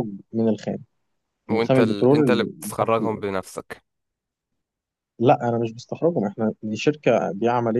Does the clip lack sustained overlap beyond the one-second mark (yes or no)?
no